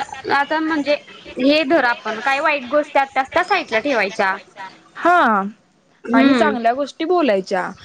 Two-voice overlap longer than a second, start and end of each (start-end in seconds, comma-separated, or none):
none